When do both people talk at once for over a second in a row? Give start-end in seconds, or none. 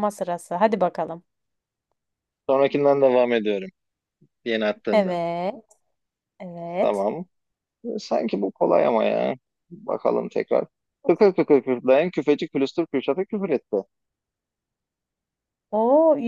none